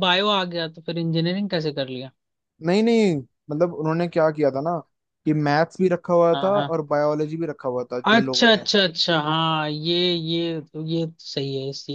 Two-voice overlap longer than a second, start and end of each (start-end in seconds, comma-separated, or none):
none